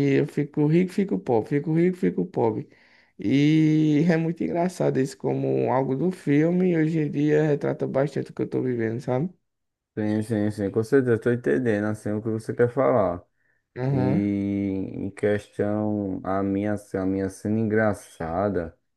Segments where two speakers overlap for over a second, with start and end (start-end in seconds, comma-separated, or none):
none